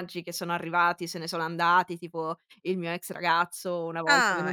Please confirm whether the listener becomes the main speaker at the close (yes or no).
yes